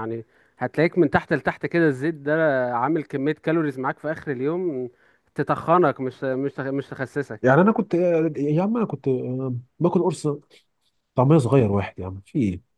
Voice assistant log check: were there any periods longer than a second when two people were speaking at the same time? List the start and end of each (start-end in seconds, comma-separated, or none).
none